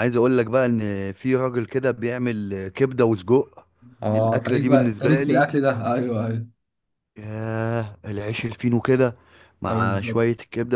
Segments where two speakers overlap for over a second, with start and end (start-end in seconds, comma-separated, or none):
4.2-5.5